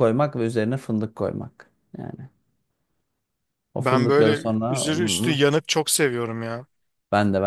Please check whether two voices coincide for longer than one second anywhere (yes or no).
yes